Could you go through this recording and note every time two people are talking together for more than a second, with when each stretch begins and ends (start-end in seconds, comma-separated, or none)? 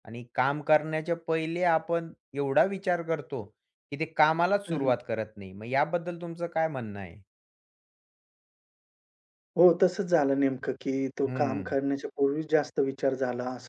none